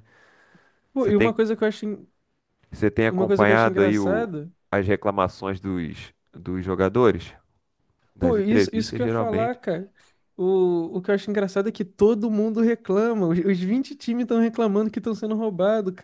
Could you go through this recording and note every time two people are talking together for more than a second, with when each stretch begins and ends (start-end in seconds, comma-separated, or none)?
3.1-4.3, 8.2-9.6